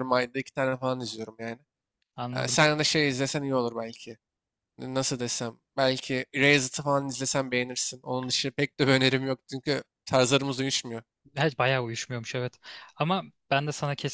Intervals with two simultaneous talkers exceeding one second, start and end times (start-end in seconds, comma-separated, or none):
none